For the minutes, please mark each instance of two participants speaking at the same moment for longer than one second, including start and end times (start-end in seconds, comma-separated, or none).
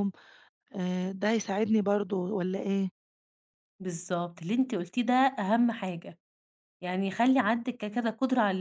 none